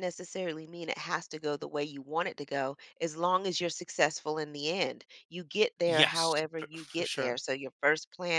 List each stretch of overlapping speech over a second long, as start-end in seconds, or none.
5.9-7.4